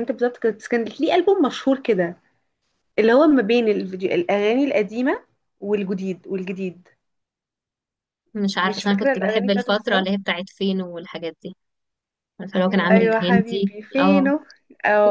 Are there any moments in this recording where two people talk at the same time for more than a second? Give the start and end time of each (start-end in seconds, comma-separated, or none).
8.6-10.2, 12.7-14.3